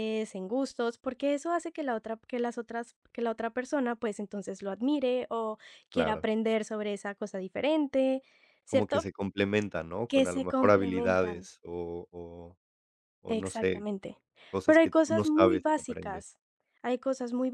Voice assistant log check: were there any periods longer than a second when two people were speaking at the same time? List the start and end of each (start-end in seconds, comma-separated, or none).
10.1-11.4, 14.6-16.2